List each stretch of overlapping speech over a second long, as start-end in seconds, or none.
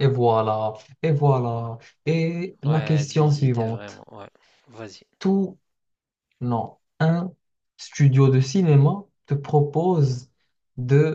2.6-4.0